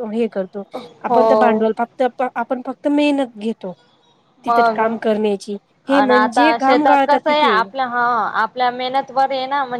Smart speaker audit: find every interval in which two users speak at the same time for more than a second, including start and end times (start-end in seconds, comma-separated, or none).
5.8-7.6